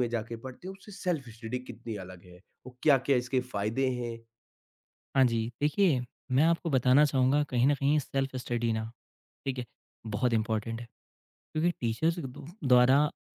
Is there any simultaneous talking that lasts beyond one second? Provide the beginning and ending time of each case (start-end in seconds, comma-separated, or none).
none